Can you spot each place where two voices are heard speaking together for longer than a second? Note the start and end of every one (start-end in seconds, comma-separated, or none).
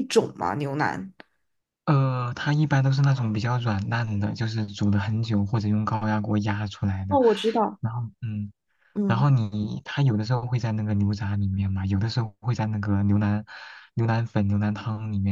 none